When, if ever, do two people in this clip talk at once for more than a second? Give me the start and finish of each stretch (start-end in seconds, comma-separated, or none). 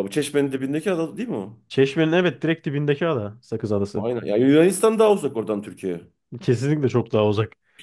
none